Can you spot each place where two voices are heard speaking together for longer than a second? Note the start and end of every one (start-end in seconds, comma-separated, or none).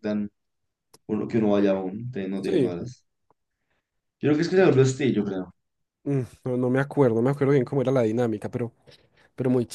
none